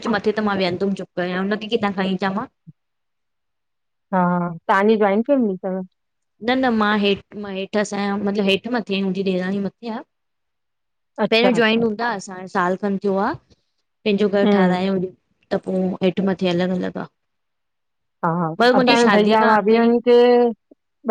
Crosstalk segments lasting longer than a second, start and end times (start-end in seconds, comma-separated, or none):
none